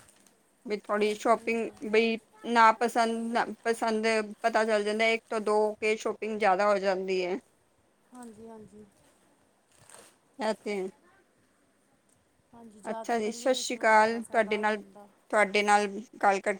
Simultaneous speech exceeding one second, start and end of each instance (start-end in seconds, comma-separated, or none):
12.9-14.8